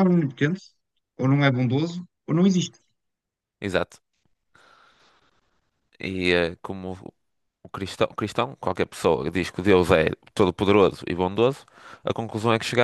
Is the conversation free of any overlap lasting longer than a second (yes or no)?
yes